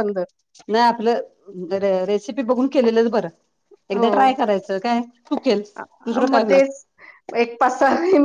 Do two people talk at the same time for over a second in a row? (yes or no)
no